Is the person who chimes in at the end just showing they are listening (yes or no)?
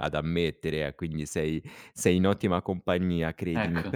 yes